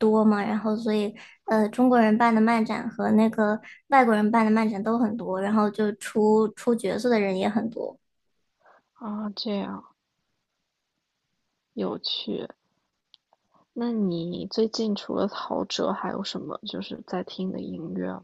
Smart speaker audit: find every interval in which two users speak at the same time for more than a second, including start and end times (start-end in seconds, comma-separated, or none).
none